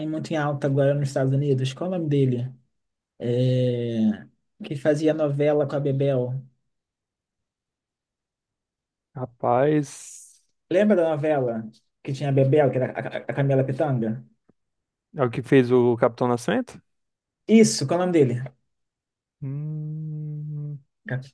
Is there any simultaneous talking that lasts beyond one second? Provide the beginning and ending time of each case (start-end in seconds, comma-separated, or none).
none